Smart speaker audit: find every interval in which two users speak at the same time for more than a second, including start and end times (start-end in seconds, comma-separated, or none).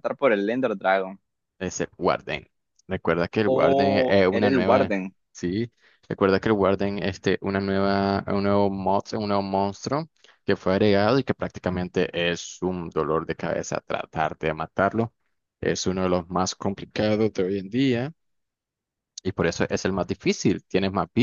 3.4-4.9